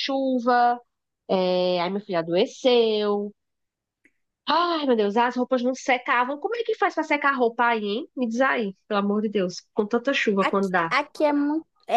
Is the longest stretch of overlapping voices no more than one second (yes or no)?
yes